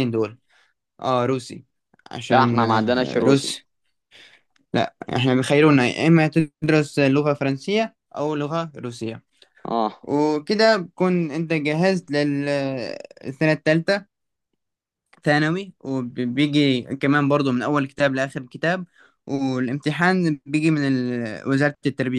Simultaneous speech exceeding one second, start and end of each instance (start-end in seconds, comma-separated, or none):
2.3-3.6